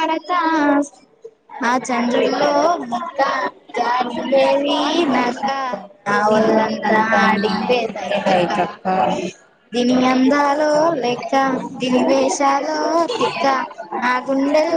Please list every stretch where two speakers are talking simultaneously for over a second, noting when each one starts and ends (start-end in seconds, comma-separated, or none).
6.3-8.6